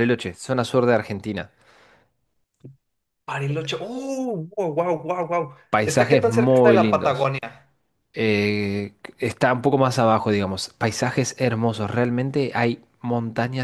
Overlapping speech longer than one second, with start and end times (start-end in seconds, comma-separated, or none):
5.7-7.3